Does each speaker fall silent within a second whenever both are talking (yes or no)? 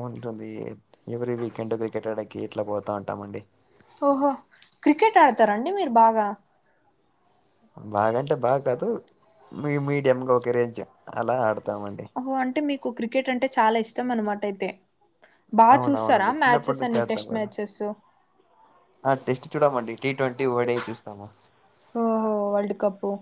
no